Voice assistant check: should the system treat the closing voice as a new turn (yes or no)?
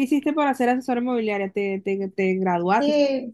yes